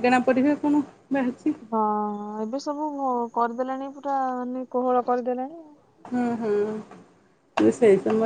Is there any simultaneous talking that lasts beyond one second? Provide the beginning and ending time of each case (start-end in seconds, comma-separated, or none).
none